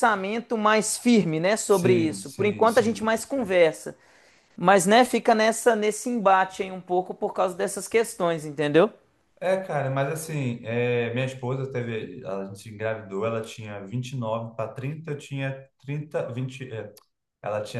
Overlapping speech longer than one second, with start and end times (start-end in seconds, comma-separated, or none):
1.7-3.1